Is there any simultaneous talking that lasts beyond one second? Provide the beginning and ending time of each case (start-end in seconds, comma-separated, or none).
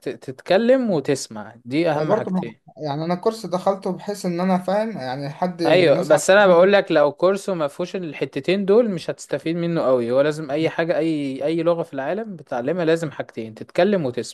none